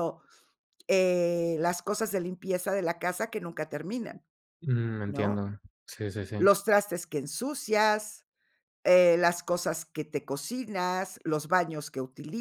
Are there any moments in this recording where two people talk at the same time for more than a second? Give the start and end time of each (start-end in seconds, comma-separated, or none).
none